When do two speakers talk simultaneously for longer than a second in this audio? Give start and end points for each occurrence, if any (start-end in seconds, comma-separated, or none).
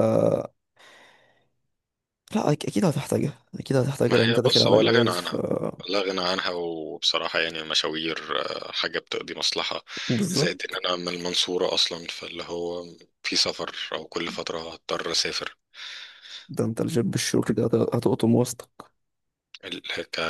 4.1-5.3